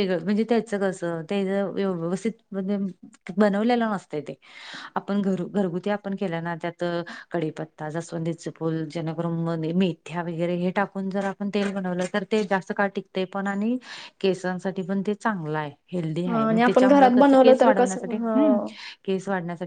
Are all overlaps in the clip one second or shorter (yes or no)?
no